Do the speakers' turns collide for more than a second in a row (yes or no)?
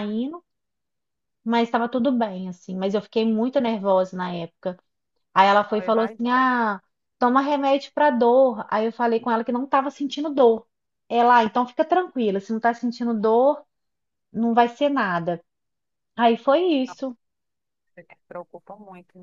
no